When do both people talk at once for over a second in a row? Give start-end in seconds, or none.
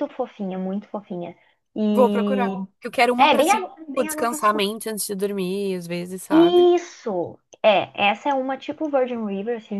3.2-4.7